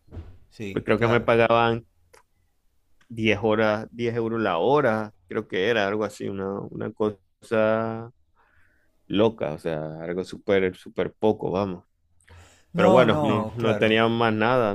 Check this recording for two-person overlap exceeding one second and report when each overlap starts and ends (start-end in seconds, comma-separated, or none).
12.7-14.0